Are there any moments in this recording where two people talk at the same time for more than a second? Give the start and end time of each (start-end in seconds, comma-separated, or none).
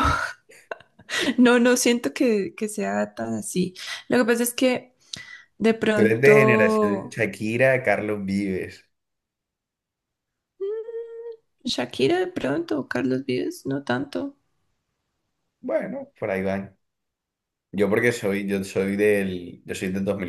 5.9-7.2